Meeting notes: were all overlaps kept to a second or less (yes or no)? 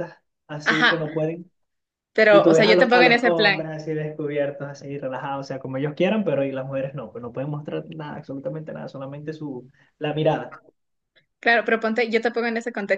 no